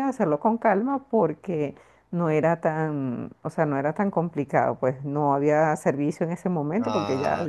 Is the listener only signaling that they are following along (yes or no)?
no